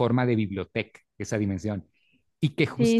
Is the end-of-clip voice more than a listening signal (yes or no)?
no